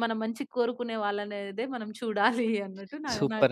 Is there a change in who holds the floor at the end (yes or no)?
yes